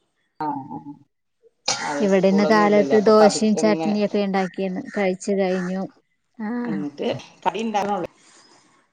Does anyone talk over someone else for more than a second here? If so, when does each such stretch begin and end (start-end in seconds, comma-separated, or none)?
2.2-3.9